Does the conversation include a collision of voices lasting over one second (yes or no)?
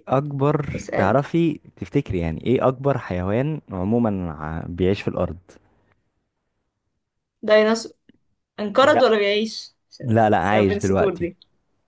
yes